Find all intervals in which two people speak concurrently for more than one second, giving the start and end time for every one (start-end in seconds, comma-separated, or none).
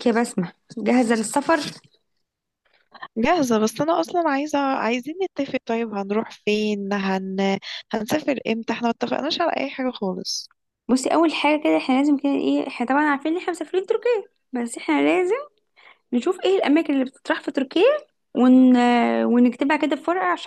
none